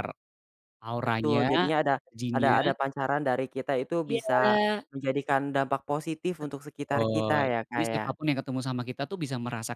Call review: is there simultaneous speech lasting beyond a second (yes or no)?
yes